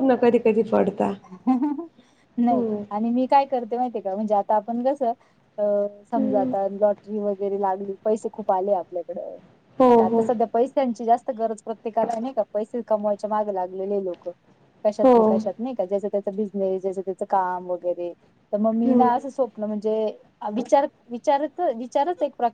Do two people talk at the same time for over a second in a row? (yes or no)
no